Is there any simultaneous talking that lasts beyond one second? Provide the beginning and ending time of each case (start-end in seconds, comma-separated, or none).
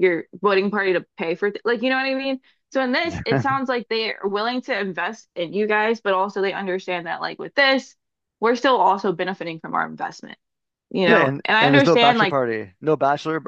11.1-12.4